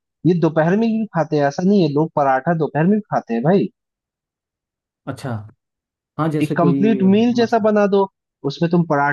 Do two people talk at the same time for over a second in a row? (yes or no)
yes